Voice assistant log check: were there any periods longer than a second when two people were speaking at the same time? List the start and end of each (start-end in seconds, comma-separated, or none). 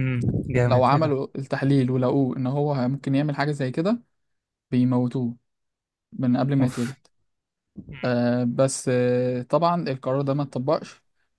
none